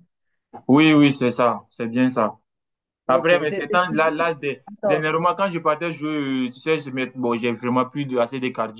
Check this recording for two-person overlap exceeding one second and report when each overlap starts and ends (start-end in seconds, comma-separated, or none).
3.1-5.1